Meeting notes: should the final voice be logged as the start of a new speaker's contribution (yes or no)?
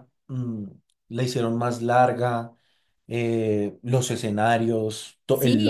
yes